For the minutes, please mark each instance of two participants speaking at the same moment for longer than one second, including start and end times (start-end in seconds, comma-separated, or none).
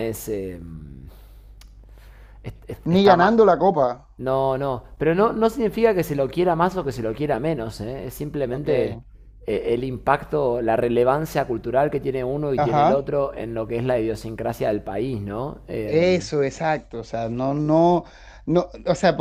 none